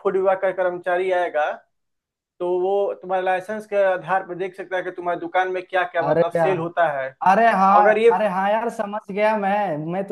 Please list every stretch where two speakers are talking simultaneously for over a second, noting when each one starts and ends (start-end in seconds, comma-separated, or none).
none